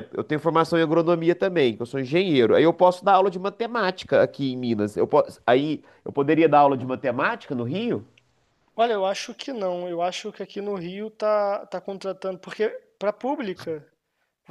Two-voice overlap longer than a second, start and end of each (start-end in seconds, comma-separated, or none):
none